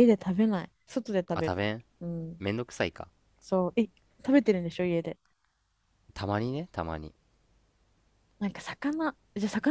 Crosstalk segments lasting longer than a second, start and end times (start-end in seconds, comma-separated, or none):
none